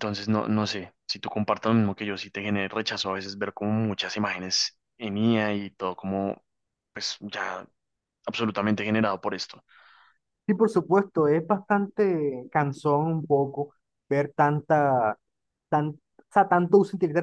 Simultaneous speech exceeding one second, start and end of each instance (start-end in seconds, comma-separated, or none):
none